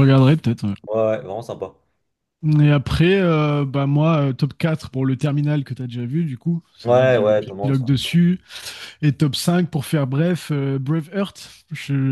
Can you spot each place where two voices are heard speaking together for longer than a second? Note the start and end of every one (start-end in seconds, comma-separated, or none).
6.8-8.1